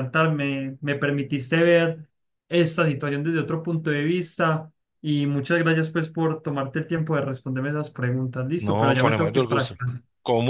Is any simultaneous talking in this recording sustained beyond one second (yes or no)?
yes